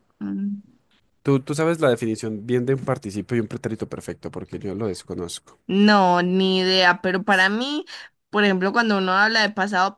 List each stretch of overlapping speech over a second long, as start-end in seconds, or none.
none